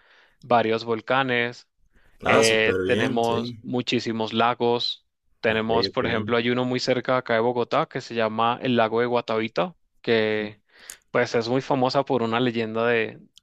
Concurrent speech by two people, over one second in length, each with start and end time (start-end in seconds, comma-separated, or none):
2.2-3.6